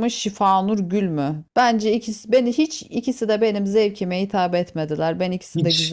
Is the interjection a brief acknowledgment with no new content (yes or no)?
no